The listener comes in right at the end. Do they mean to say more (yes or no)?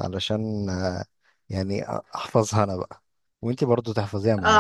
yes